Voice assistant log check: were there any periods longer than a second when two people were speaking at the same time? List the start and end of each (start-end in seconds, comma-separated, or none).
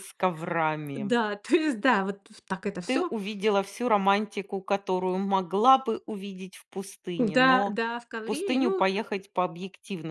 7.2-8.8